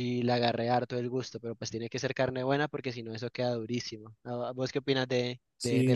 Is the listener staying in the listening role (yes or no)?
no